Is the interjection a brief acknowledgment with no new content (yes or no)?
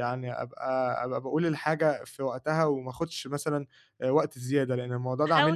no